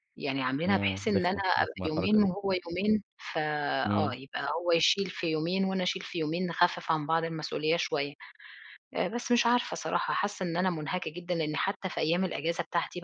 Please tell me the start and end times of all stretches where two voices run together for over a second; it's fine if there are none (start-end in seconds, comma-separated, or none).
0.7-2.3